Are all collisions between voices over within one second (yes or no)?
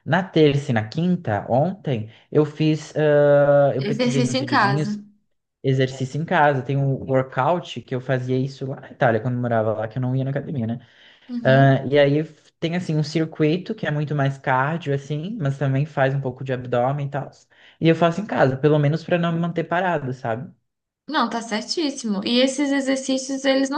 no